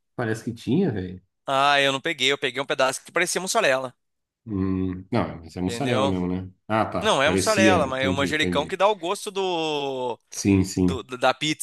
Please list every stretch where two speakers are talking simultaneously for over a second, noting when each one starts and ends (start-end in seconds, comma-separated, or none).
7.0-8.8